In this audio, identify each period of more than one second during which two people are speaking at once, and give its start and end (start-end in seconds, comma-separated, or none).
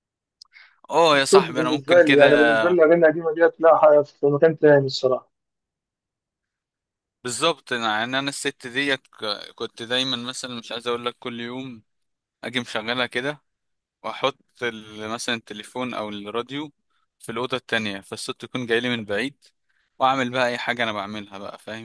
1.2-2.5